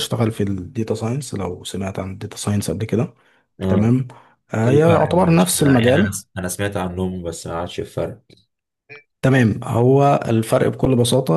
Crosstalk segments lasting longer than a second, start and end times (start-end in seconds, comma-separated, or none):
4.6-6.2